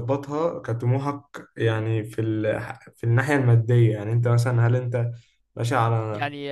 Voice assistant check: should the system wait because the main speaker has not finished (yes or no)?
no